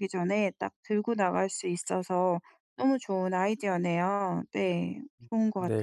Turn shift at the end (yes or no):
yes